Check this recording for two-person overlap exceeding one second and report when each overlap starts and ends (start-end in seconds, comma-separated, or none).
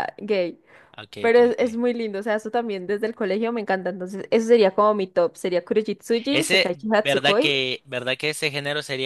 6.3-7.6